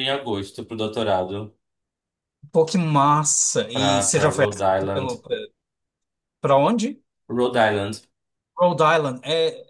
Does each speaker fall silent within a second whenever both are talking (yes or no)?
no